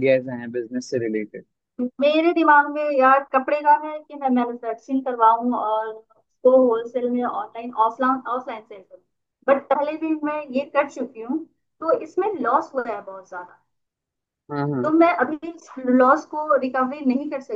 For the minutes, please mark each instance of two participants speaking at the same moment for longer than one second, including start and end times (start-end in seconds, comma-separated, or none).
none